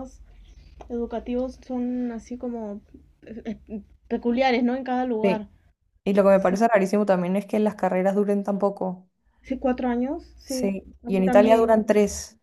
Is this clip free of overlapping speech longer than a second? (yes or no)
no